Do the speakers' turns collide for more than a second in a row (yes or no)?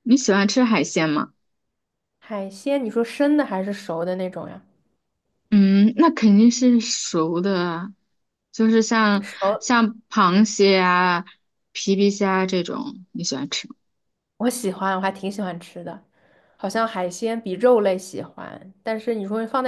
no